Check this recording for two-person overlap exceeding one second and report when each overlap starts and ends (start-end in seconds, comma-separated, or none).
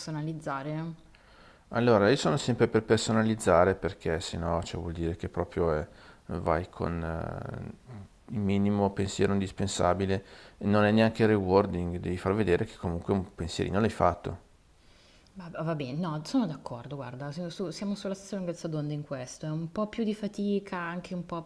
none